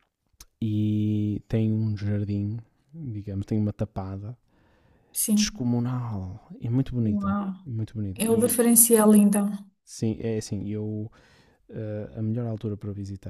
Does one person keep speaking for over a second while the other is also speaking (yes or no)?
no